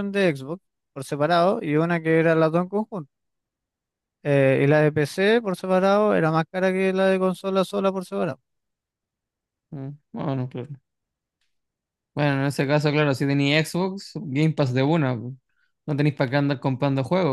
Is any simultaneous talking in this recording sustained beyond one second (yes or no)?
no